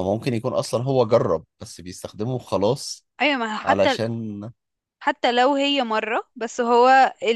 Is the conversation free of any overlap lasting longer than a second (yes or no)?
yes